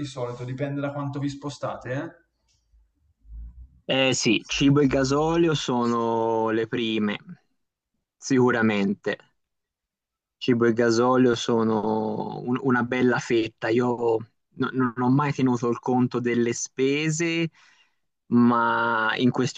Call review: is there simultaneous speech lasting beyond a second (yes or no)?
no